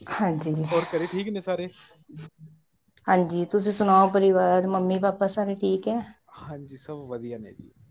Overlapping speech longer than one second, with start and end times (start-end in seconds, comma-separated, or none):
none